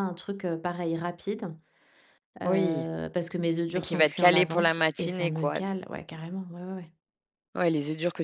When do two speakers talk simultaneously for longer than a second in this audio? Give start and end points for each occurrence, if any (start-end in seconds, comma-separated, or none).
3.7-5.6